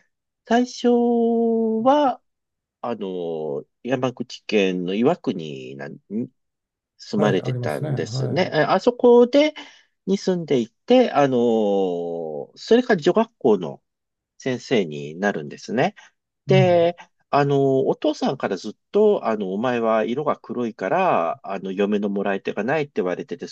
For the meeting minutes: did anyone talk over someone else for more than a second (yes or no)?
yes